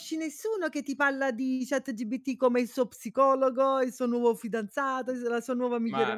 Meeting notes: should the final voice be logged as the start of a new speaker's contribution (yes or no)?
yes